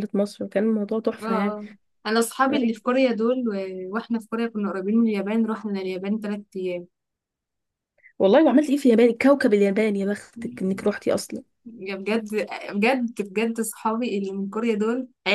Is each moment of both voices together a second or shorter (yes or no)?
yes